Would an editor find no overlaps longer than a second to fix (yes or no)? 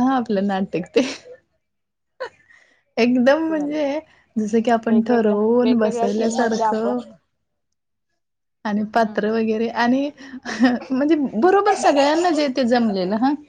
no